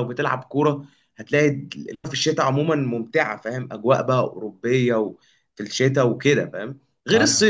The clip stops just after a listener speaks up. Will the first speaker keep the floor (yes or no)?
yes